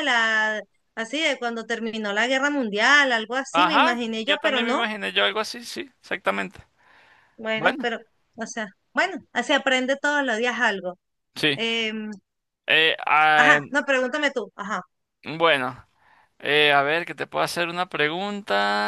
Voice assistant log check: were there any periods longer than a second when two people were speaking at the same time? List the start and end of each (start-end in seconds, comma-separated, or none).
3.5-4.8